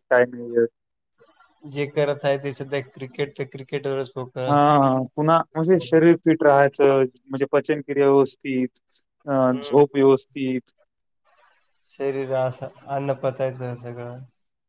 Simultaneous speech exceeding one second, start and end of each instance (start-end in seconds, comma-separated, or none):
none